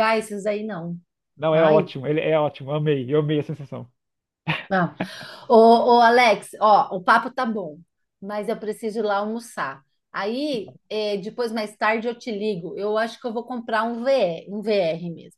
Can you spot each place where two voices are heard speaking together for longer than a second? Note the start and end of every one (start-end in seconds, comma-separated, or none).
none